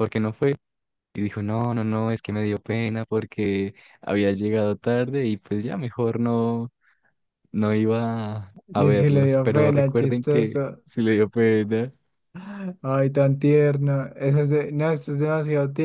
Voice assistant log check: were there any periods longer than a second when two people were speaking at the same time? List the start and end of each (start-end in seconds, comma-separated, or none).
8.7-10.8